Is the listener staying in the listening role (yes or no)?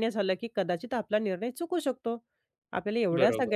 yes